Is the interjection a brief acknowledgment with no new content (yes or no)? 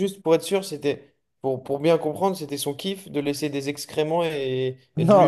no